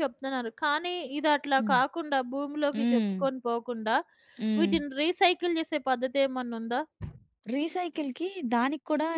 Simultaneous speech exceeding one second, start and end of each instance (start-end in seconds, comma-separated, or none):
none